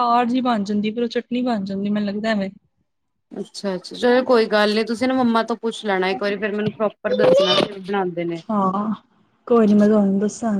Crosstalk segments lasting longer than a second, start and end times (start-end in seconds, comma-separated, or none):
none